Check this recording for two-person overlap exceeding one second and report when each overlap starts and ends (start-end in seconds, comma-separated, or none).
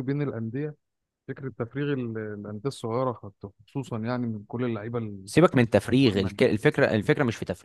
none